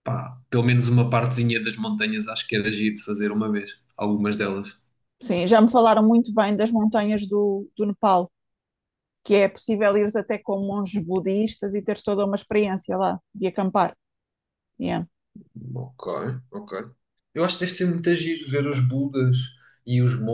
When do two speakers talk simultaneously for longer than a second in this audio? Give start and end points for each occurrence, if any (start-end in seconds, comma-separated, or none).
none